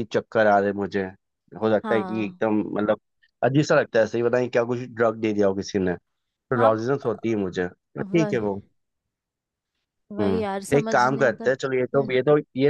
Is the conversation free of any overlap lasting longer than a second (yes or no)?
no